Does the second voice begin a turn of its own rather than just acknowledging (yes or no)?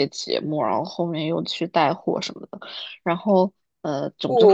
yes